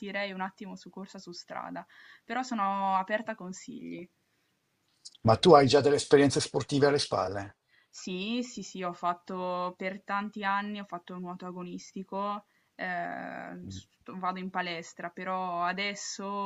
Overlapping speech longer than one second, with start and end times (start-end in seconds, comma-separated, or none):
none